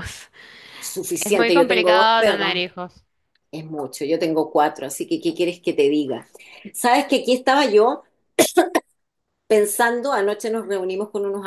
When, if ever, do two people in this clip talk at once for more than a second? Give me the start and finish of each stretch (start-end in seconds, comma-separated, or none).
1.2-2.6